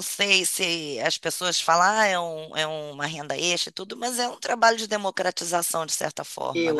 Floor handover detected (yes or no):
yes